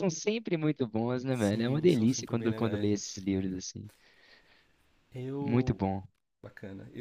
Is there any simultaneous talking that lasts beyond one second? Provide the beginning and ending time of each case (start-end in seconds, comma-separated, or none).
1.3-2.9